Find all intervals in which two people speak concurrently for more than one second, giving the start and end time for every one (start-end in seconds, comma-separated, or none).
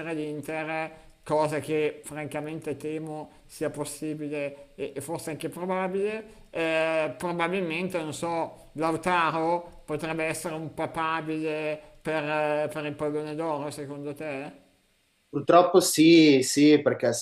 none